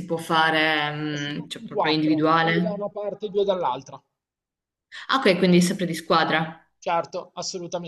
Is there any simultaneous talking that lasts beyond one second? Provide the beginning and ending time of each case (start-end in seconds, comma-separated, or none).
1.4-2.9